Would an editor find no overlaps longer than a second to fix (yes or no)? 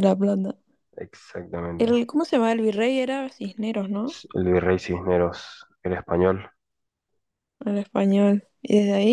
yes